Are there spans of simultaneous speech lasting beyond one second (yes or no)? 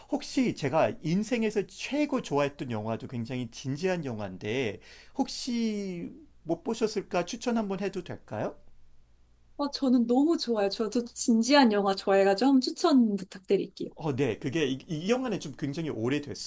no